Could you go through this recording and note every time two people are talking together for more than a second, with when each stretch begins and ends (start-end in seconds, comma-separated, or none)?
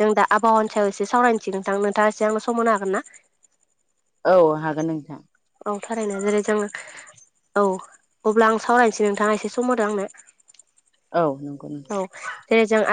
none